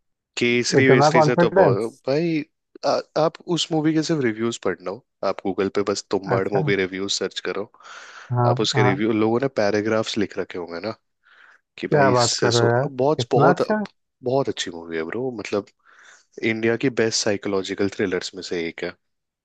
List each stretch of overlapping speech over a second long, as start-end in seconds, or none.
0.8-2.0, 11.9-13.6